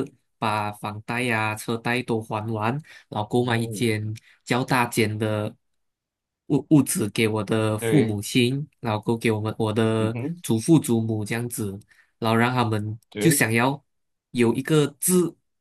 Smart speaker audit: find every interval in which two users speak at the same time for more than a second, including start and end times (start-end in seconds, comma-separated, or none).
none